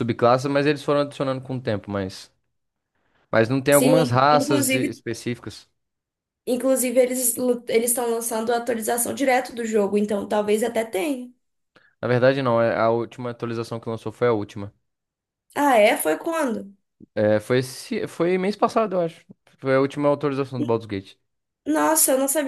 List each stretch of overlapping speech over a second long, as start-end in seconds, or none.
3.7-5.0